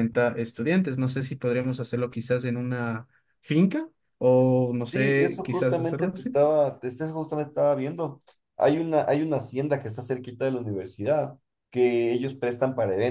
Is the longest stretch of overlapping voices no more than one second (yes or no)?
no